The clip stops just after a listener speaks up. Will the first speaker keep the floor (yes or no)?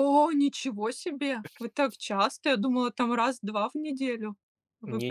no